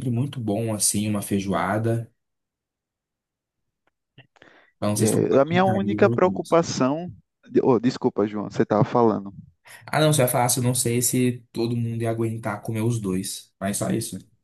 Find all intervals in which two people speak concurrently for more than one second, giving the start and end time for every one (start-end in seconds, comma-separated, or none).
5.0-6.6